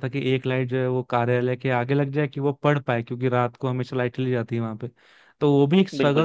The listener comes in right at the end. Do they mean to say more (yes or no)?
no